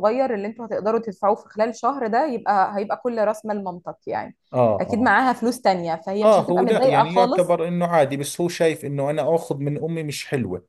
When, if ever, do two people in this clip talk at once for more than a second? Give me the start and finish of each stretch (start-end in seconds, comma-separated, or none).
6.2-7.5